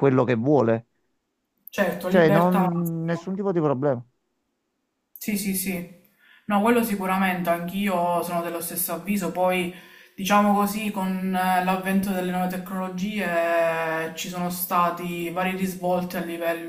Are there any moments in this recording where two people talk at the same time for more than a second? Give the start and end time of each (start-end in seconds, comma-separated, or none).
2.1-3.3